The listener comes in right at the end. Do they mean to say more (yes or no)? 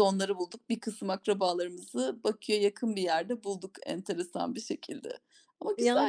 yes